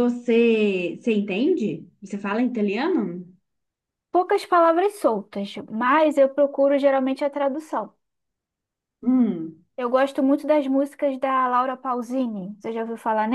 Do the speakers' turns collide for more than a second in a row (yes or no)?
no